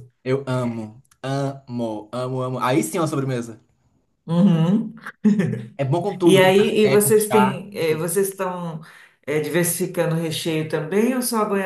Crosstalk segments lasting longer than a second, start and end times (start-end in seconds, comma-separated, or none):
6.2-8.1